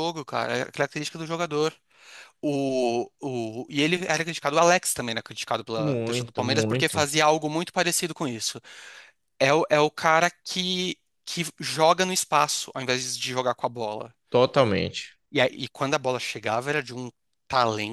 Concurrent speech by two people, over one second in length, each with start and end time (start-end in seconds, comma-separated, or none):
5.8-7.0